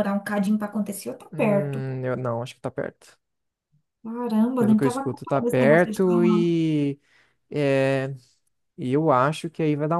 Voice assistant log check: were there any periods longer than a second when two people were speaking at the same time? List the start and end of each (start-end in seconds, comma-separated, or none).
4.6-6.5